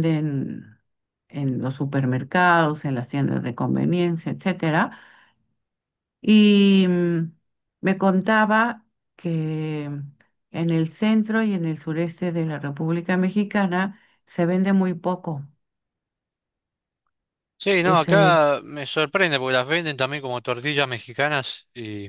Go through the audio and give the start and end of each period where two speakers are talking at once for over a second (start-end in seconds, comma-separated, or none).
none